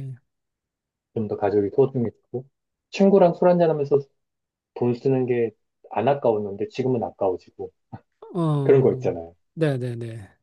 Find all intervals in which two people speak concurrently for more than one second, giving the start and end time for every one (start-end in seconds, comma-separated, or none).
none